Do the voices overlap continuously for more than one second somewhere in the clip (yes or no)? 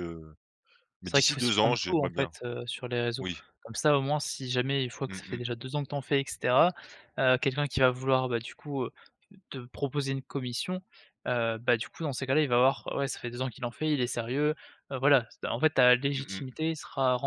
yes